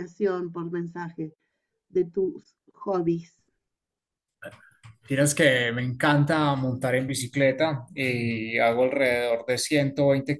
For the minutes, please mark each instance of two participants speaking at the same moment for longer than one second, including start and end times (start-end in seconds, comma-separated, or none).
none